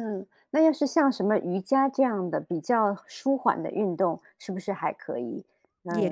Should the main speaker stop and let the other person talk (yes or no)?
yes